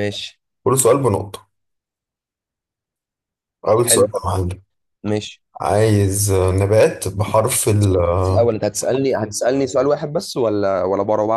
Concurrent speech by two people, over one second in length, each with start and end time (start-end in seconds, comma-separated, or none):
none